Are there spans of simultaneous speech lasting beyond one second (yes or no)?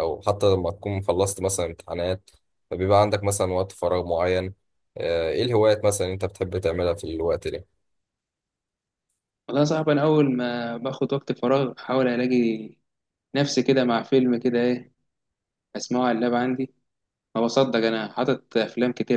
no